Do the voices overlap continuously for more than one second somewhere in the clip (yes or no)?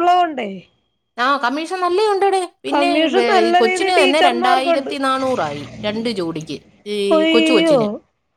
yes